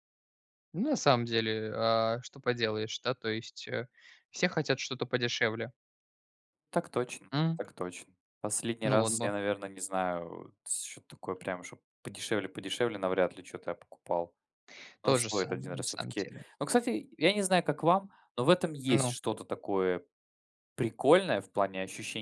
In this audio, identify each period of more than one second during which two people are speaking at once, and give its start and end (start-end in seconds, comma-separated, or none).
15.0-16.4